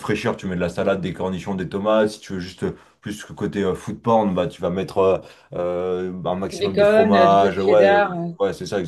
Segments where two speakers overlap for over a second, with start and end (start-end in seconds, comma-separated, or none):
6.5-8.3